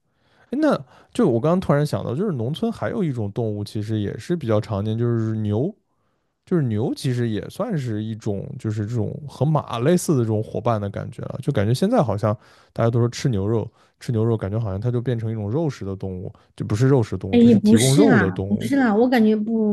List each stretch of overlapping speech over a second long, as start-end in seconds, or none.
17.3-18.7